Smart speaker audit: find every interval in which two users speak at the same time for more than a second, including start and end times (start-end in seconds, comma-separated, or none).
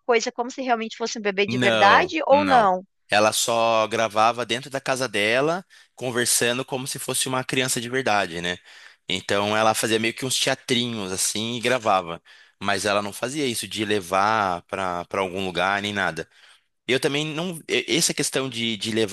1.5-2.7